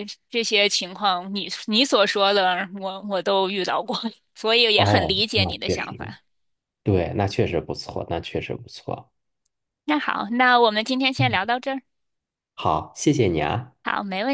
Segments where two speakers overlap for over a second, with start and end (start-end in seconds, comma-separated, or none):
4.7-6.1